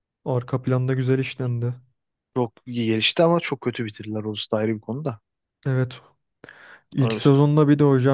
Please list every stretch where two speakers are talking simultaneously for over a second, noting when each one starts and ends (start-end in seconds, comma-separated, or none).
none